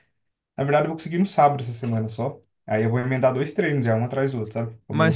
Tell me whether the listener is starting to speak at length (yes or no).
yes